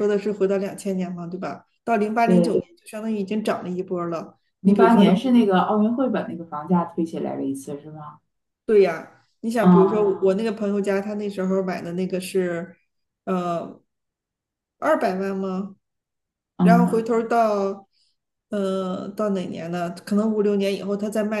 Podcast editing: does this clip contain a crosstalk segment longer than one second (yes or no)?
no